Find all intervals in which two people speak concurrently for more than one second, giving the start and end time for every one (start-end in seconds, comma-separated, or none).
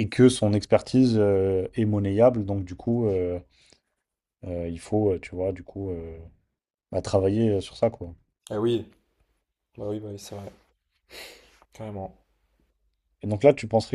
none